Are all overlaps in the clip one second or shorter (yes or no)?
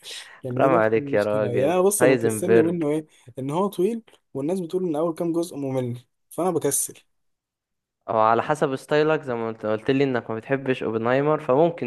no